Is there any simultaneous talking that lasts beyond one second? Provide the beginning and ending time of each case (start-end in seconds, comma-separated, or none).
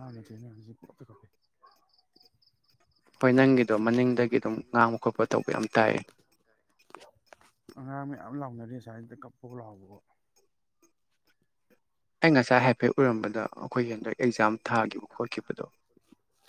13.0-15.7